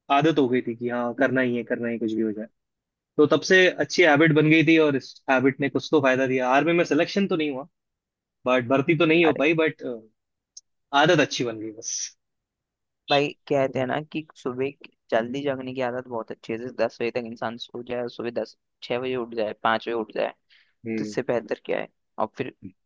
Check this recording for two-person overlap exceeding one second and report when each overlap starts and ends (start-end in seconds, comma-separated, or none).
none